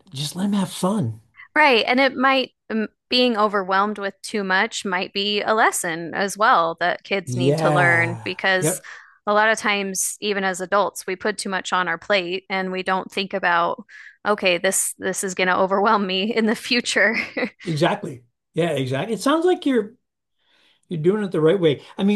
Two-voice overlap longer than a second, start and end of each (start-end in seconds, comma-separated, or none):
7.2-8.8